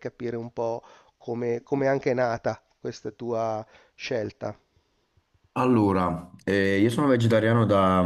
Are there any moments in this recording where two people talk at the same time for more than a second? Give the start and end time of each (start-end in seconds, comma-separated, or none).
none